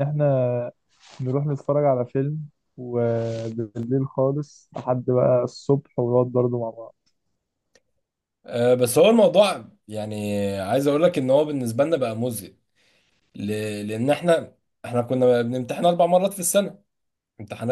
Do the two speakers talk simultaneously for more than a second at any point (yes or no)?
no